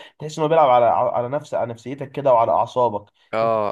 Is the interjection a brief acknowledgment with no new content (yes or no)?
no